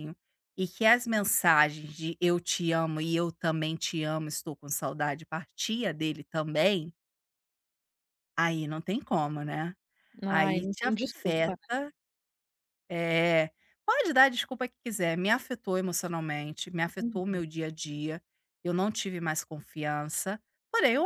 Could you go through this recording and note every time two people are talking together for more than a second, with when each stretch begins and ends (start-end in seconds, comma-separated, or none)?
10.3-11.6